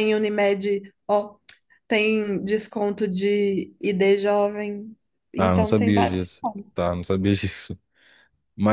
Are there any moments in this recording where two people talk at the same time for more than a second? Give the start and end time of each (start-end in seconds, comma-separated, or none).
5.4-6.8